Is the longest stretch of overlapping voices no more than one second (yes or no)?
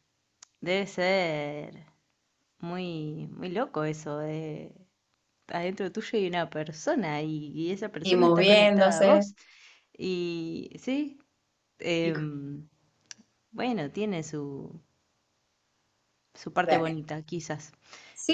no